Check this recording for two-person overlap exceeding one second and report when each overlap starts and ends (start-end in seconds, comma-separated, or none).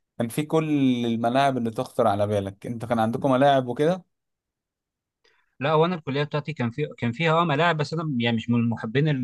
none